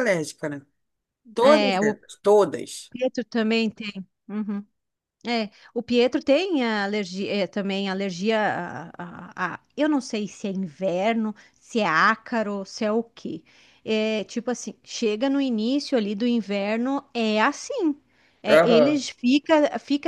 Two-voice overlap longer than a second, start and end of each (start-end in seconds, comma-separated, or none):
none